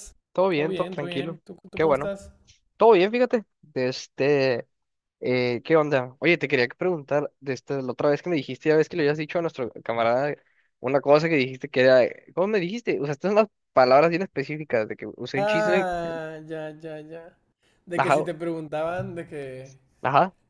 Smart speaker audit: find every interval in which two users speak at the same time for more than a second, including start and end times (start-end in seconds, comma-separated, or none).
0.5-2.1